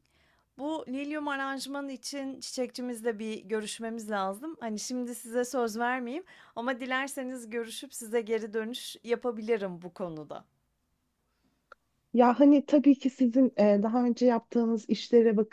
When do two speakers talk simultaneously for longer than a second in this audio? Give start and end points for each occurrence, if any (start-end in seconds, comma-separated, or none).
none